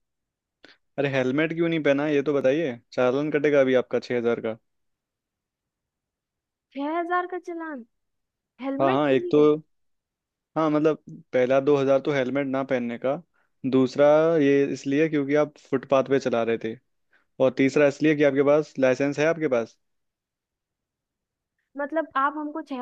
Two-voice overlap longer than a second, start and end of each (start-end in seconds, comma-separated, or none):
none